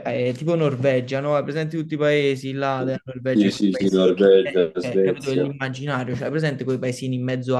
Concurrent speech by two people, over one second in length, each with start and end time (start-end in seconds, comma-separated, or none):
3.3-5.5